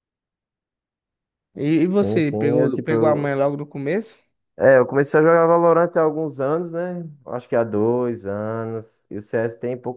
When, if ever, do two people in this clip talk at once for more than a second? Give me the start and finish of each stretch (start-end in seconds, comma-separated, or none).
1.8-3.4